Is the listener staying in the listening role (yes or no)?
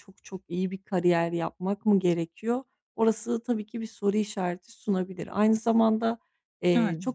yes